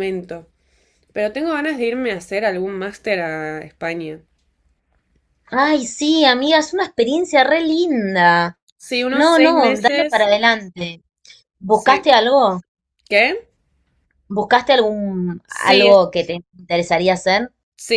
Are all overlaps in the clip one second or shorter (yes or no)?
no